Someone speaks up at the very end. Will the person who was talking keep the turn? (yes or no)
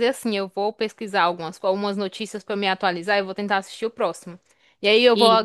yes